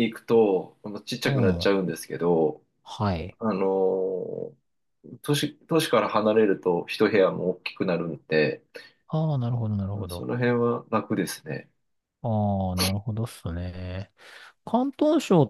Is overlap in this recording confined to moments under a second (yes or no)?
yes